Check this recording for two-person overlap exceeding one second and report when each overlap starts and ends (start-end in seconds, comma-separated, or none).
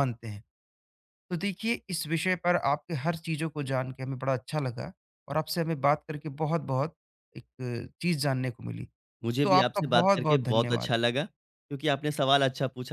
9.4-10.9